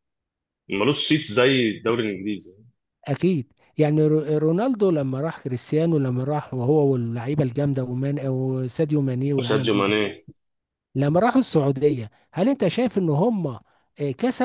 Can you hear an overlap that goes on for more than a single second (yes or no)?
no